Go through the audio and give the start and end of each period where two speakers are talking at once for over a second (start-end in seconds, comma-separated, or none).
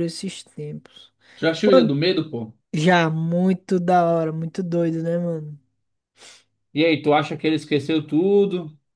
none